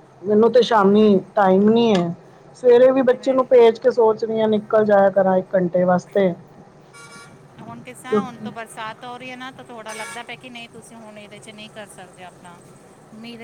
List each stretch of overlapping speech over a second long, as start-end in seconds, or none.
none